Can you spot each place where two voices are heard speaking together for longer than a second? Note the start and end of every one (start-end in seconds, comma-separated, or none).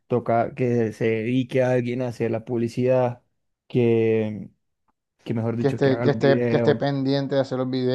5.6-7.0